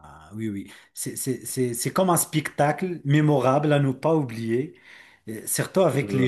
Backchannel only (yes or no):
yes